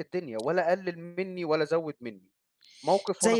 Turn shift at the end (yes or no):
yes